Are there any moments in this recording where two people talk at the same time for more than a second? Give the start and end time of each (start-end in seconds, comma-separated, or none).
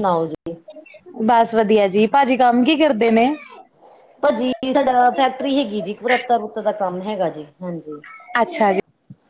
none